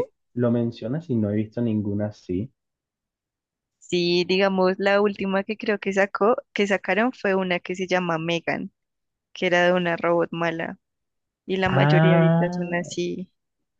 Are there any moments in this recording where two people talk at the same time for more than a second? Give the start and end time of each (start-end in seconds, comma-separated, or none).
11.7-12.9